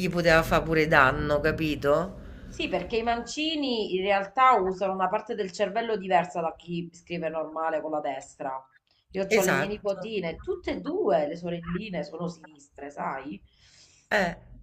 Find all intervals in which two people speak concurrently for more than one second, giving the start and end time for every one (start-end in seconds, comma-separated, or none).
none